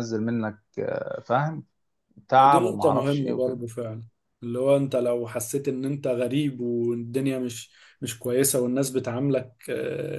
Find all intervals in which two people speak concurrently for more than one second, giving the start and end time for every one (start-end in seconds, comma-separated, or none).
2.4-3.6